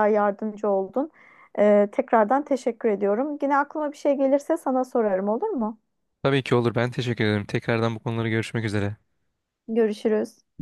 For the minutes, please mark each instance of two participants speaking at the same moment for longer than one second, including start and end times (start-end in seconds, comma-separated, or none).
none